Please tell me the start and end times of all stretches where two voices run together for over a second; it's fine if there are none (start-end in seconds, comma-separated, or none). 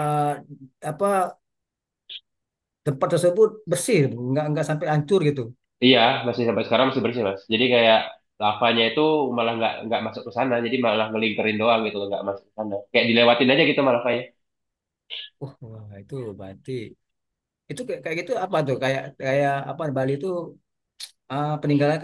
none